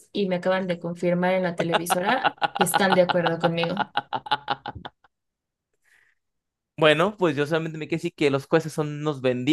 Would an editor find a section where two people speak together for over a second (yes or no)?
no